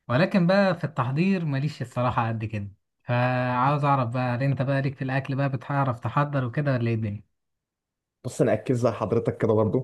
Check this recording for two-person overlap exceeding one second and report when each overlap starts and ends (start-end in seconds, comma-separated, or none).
none